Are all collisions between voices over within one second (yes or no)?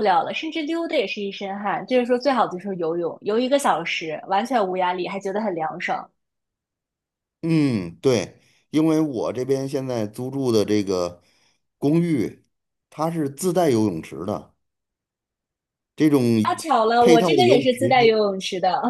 no